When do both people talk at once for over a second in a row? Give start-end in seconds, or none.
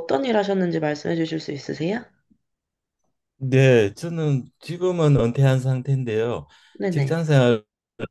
none